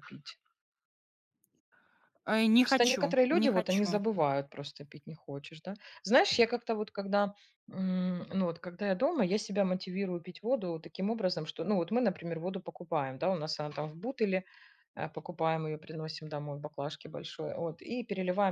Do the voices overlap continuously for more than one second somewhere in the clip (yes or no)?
yes